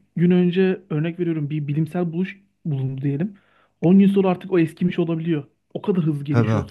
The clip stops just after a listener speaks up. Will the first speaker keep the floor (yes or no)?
no